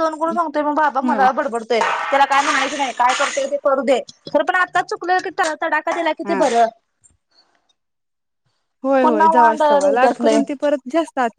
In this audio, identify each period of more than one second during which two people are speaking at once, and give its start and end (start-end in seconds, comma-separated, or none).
9.0-10.4